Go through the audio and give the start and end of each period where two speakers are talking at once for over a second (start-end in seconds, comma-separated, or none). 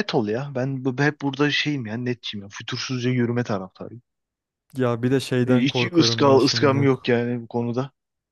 5.5-6.9